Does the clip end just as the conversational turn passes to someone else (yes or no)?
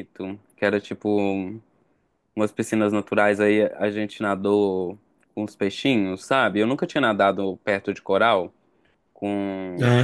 yes